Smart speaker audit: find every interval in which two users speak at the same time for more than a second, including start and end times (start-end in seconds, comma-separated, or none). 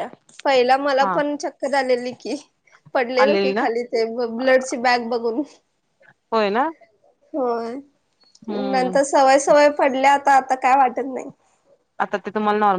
none